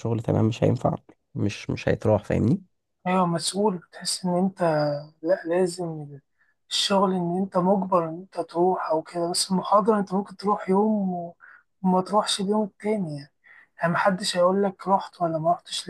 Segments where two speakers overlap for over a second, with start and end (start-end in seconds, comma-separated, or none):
none